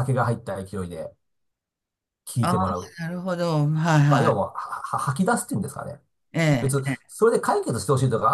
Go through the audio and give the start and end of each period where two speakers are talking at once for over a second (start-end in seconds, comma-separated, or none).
none